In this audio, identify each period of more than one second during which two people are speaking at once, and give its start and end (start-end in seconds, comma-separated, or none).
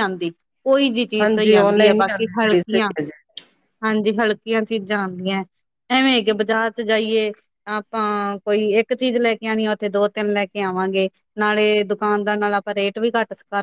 1.2-2.9